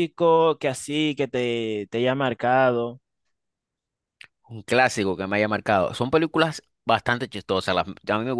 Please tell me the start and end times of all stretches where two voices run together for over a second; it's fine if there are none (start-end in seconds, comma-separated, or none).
none